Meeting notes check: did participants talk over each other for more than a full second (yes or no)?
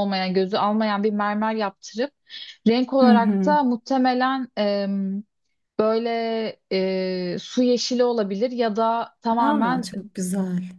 no